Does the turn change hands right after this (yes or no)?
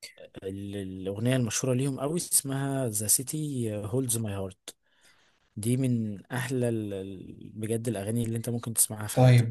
yes